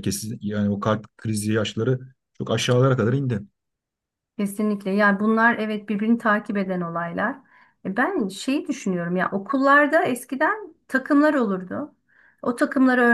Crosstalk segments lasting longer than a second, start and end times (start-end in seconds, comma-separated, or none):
none